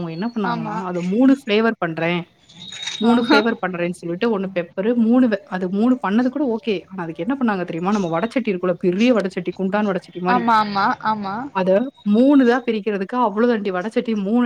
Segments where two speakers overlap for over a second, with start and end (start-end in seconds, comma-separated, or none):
none